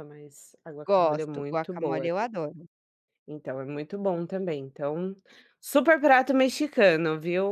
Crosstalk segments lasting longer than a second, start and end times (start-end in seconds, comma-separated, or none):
0.9-2.1